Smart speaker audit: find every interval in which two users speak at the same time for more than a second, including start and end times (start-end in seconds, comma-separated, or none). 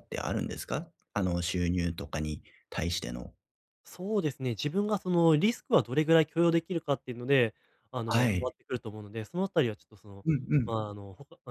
none